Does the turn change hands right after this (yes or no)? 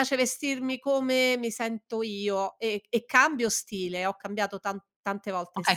yes